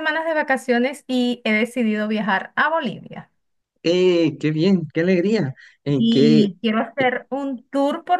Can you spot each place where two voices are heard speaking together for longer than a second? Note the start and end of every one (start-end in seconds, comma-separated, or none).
none